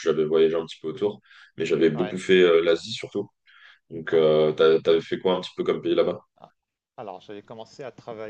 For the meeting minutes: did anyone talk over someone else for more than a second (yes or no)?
no